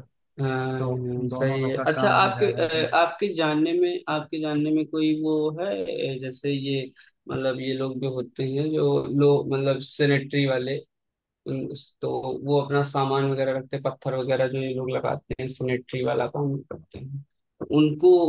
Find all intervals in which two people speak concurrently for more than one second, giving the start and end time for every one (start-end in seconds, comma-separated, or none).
0.8-2.8